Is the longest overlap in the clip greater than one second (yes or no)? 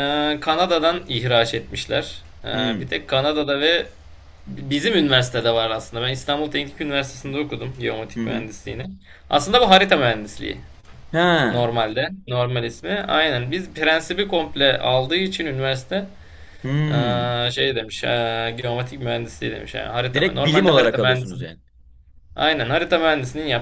yes